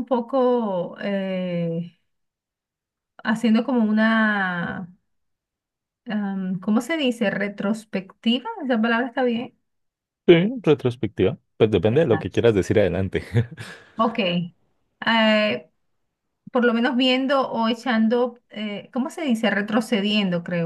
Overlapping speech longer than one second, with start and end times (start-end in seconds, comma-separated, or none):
none